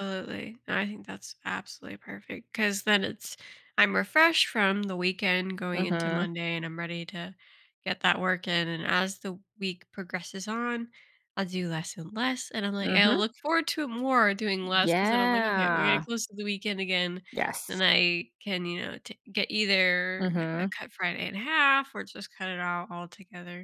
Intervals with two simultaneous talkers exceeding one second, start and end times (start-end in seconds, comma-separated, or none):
14.8-16.0